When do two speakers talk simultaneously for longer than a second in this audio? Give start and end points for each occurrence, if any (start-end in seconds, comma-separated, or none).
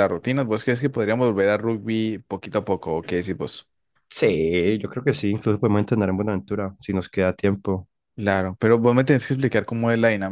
none